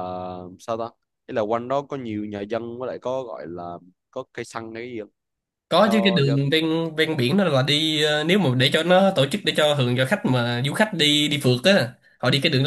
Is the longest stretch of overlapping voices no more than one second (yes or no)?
yes